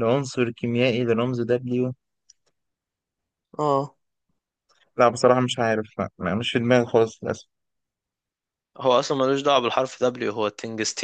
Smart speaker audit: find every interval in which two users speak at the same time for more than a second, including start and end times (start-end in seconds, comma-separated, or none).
none